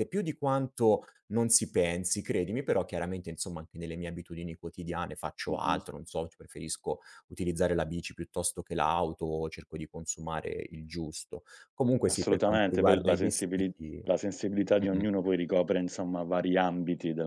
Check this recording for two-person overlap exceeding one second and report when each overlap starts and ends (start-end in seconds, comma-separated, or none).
12.1-13.7